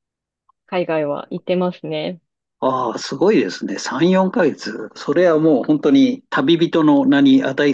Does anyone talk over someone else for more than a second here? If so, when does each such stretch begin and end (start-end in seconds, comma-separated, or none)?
none